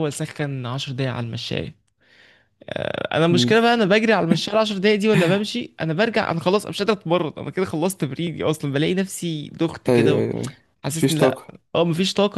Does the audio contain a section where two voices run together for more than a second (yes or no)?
no